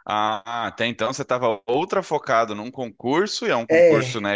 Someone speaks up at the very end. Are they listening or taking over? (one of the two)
listening